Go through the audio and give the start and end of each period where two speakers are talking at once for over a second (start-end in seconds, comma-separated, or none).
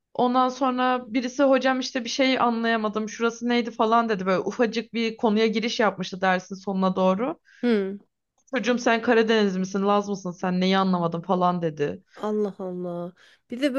none